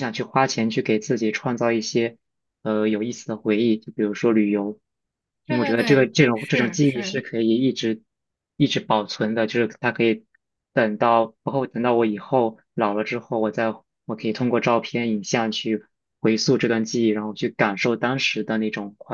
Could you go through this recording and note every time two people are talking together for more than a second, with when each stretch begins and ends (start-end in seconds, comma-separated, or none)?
5.5-7.2